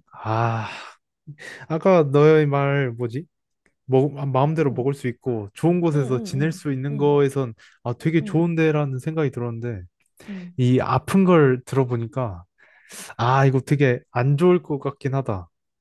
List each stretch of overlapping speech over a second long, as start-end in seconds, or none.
5.9-7.2